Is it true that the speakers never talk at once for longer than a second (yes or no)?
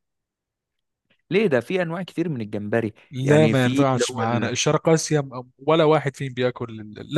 no